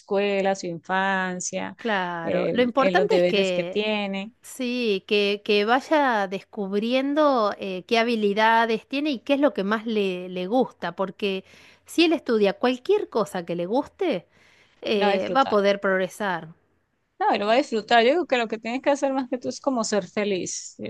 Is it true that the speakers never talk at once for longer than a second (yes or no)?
no